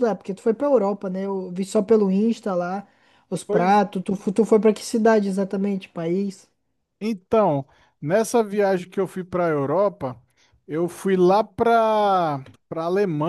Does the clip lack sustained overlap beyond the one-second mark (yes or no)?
yes